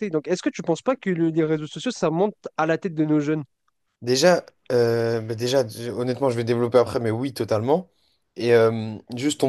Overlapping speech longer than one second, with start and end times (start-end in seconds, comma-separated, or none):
none